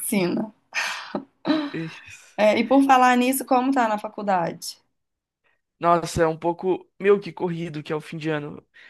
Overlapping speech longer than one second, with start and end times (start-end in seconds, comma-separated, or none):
none